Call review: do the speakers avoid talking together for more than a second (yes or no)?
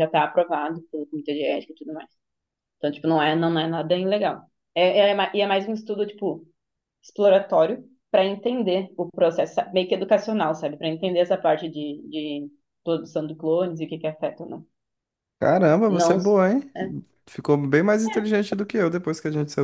yes